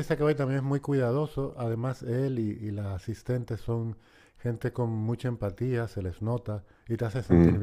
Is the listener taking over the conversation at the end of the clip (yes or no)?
no